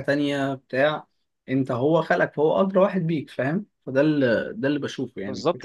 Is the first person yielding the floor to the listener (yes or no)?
yes